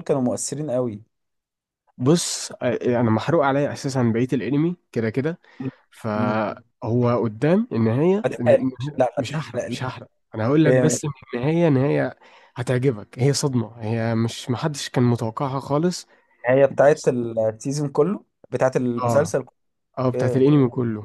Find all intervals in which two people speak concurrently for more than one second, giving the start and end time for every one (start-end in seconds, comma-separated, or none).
8.2-9.8